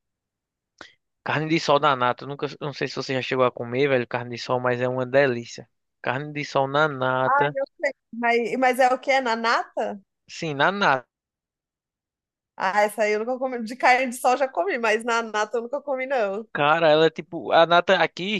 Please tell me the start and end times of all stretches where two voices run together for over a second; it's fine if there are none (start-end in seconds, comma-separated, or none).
none